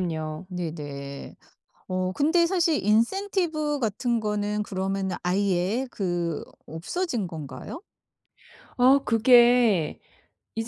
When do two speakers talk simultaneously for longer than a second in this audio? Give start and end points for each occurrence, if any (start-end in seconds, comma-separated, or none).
none